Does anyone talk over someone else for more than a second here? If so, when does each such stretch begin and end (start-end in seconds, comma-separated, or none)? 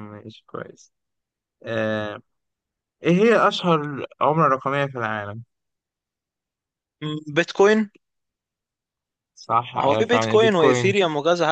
9.8-11.0